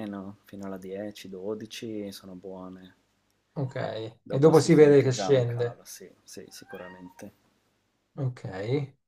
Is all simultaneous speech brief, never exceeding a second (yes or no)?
no